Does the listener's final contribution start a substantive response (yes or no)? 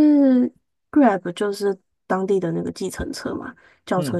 no